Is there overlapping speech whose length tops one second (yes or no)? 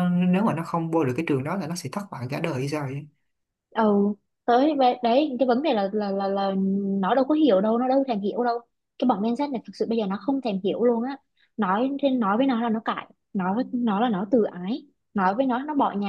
no